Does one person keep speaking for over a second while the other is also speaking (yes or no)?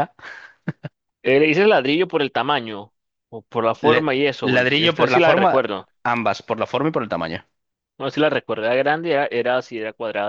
yes